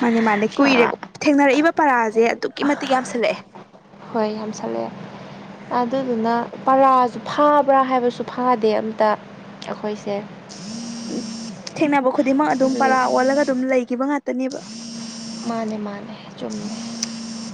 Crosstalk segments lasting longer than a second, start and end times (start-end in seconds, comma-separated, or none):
none